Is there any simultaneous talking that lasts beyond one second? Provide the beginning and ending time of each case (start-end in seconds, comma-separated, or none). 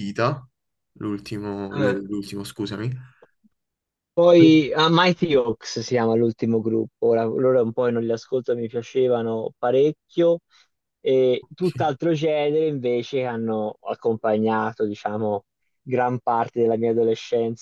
none